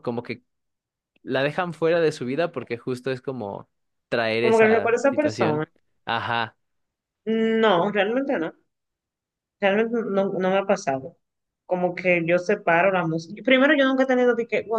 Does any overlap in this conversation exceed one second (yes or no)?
yes